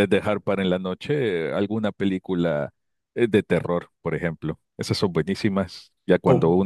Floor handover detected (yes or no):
no